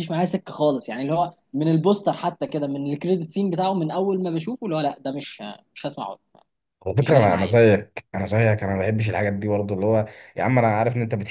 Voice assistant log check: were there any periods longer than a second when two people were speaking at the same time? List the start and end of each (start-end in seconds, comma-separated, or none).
none